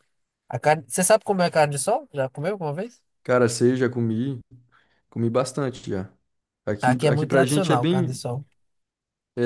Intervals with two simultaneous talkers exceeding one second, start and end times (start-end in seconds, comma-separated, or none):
6.8-8.2